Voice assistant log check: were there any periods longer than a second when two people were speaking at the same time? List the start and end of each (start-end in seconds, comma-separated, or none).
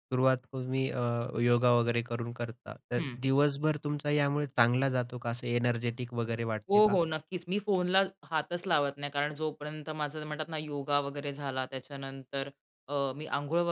none